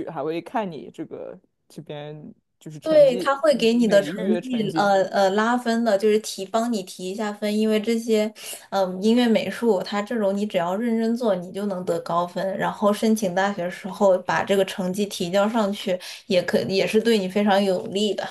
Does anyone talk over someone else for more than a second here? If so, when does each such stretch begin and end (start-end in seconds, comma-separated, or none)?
2.8-4.9